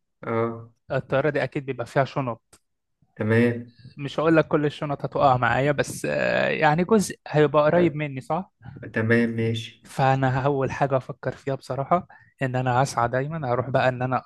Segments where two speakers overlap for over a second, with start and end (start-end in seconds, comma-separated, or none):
none